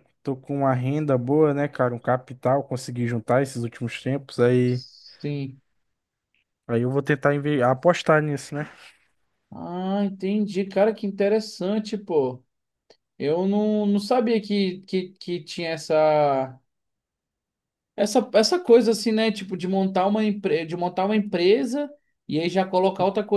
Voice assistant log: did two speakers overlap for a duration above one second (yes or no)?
no